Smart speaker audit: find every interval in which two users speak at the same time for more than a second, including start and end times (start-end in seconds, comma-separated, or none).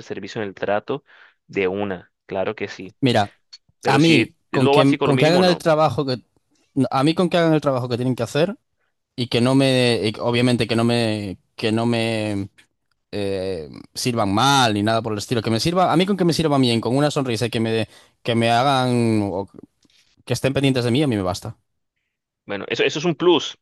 3.9-5.6